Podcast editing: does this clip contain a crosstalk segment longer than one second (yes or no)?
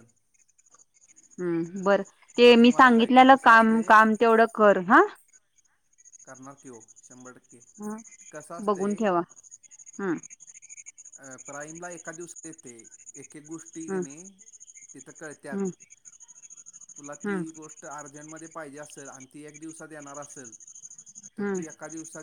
yes